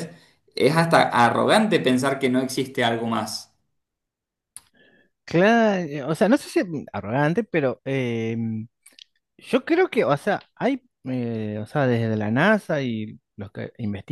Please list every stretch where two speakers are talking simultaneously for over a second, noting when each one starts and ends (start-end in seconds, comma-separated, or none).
none